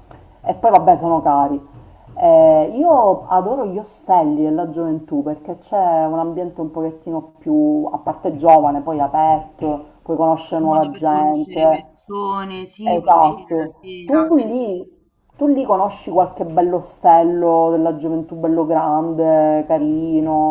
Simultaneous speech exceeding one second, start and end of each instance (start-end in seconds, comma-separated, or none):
10.5-11.9, 12.8-14.6